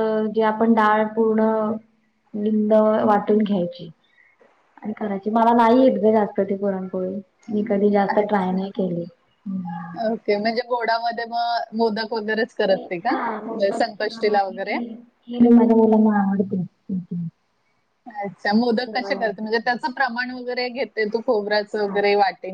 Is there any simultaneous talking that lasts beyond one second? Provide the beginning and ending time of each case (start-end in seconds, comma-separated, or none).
none